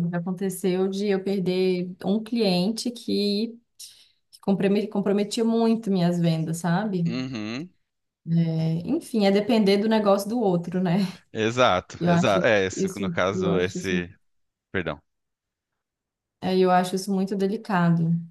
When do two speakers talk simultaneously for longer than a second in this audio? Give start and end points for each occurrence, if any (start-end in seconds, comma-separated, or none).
12.0-14.1